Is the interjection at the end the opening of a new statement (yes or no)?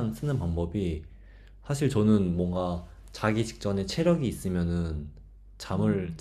no